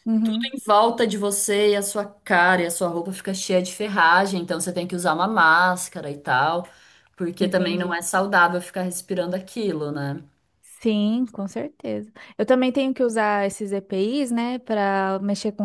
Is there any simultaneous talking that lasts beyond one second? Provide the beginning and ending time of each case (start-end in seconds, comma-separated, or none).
none